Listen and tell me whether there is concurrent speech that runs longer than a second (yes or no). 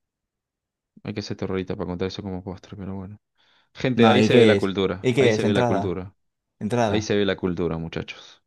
yes